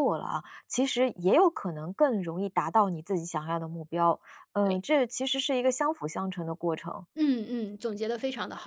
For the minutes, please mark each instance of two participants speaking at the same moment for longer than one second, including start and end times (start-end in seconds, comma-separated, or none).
none